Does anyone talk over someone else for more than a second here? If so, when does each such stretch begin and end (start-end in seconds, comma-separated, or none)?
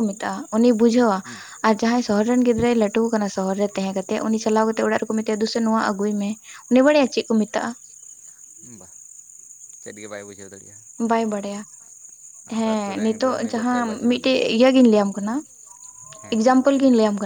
12.6-14.6